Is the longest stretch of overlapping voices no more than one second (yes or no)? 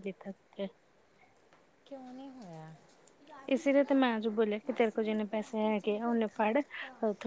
no